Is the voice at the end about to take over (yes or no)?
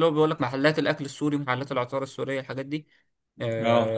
no